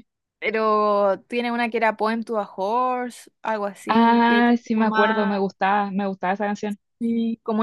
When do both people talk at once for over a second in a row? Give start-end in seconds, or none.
3.9-5.3